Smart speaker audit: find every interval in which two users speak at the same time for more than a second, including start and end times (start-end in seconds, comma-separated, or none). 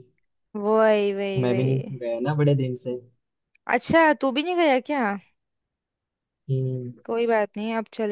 none